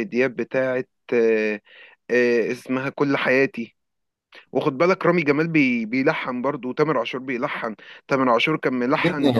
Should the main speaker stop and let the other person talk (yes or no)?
yes